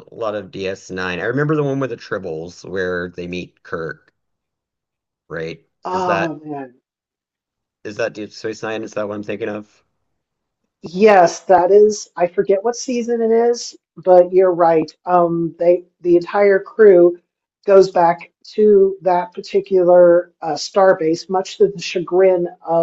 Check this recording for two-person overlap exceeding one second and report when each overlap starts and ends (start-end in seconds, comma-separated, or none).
none